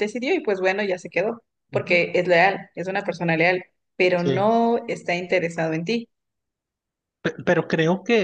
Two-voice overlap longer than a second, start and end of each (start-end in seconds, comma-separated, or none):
none